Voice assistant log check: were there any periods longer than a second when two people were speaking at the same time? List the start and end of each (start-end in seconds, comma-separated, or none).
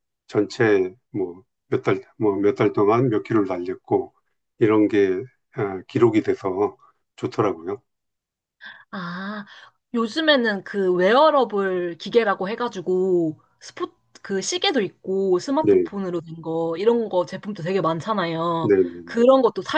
none